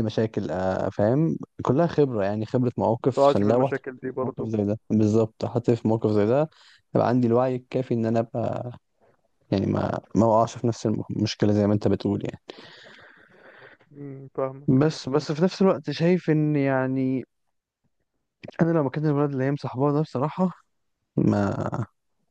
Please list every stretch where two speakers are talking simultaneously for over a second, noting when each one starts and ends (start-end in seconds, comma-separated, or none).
3.0-4.5